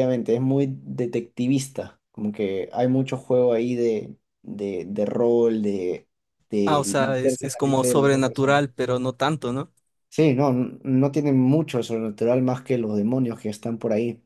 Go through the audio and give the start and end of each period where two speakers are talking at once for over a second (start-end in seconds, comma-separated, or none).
6.7-8.6